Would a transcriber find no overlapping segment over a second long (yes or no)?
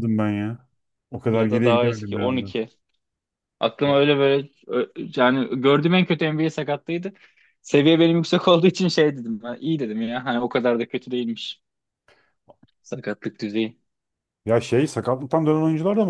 no